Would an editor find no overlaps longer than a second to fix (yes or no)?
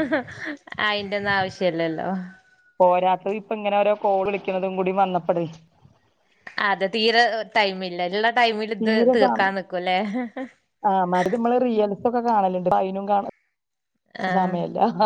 yes